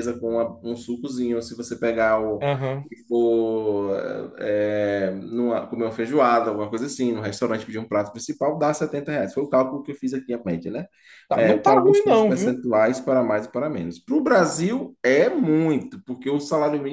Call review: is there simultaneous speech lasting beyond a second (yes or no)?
yes